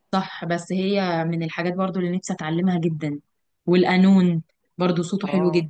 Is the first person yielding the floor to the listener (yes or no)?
yes